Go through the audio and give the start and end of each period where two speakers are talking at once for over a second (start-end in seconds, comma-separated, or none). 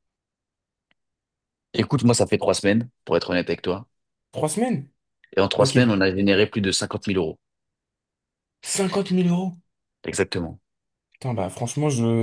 none